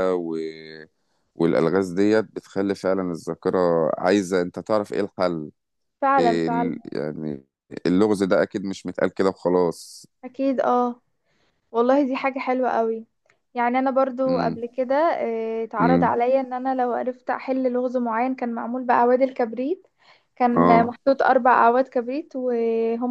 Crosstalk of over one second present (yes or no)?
no